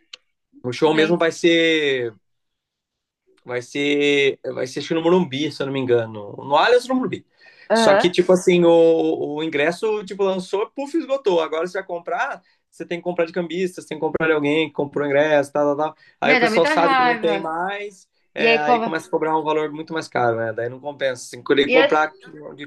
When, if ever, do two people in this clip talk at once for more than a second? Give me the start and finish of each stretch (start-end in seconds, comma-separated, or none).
16.2-17.5